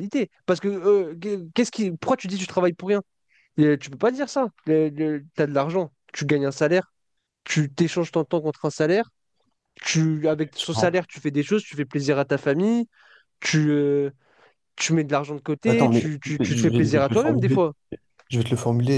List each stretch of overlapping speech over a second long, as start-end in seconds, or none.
15.7-17.6